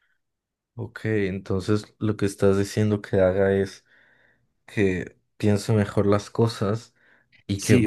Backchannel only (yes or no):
no